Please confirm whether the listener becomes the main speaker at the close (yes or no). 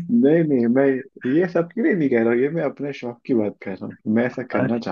yes